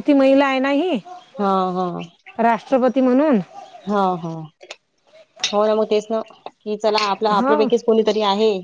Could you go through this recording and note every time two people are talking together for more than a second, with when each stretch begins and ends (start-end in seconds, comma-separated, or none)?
none